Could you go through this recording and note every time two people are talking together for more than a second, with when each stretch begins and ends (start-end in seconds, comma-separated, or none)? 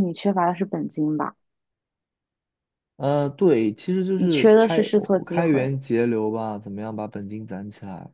4.2-5.7